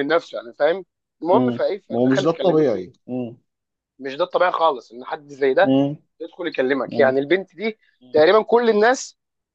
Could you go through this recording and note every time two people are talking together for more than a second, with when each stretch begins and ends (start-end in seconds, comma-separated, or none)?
1.3-2.9